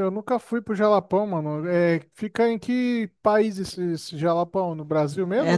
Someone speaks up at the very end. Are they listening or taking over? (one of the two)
taking over